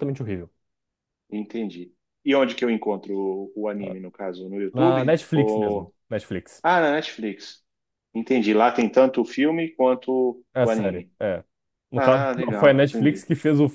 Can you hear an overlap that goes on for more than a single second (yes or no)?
yes